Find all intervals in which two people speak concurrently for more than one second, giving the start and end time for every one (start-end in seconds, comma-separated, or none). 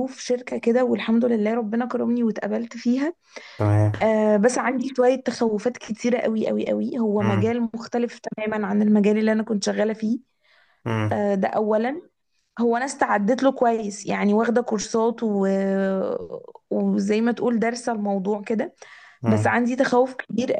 none